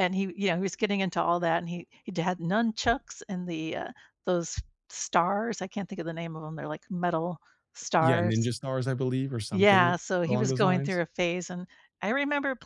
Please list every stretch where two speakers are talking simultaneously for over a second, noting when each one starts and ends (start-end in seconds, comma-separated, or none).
9.5-11.0